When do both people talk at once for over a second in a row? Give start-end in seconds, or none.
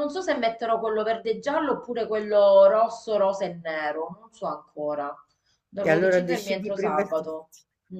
5.8-7.3